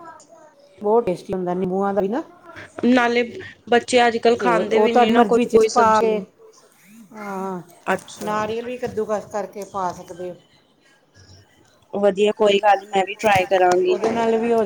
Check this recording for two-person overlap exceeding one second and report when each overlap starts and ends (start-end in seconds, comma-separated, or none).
4.4-6.2